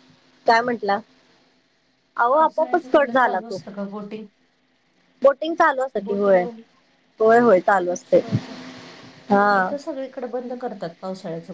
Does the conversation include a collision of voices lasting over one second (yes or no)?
yes